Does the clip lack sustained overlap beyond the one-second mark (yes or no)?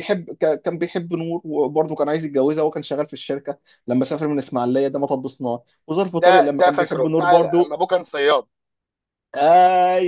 no